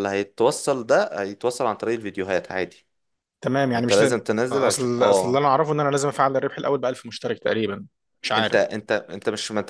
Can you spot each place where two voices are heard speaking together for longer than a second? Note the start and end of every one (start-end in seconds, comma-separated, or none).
3.7-5.4